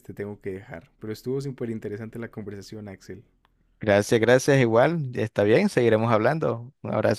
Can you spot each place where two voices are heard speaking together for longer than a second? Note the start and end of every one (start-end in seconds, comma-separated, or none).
none